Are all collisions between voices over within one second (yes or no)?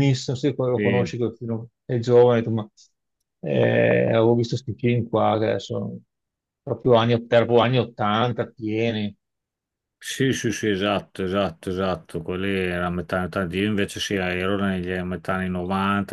yes